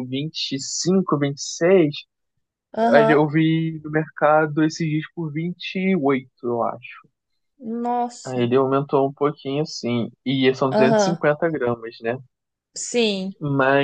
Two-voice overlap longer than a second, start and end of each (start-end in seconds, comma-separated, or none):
none